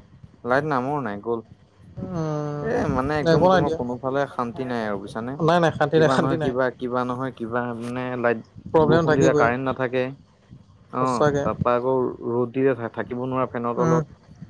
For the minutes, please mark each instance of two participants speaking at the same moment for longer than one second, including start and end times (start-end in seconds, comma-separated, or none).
2.2-3.8